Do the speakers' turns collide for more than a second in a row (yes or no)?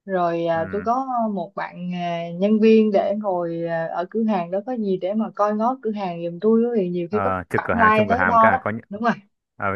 yes